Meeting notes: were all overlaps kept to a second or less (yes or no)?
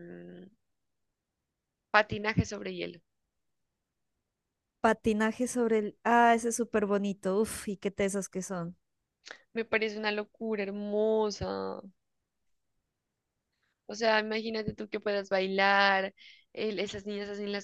yes